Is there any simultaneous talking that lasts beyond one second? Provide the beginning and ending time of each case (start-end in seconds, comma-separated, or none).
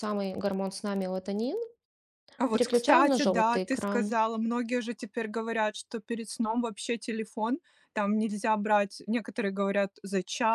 2.5-4.1